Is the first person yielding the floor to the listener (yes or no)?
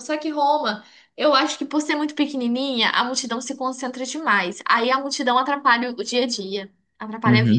yes